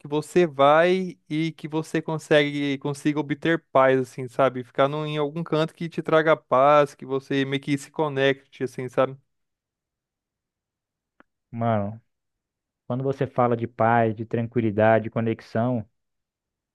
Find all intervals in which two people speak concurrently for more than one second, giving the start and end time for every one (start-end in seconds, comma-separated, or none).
none